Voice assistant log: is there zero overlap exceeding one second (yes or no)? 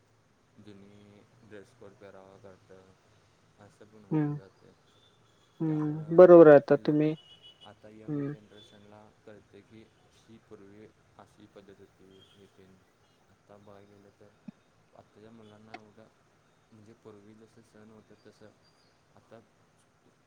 no